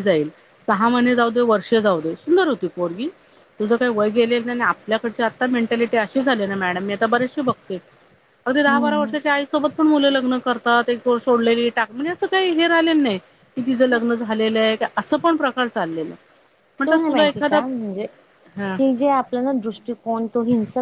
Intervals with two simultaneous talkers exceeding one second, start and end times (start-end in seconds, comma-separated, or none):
none